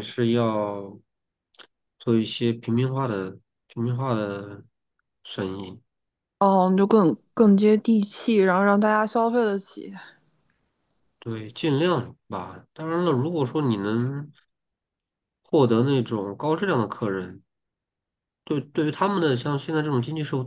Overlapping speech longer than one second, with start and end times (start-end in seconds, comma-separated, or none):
none